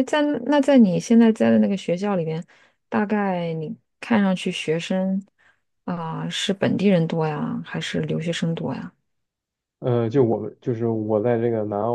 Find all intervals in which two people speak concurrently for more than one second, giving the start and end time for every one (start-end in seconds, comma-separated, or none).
none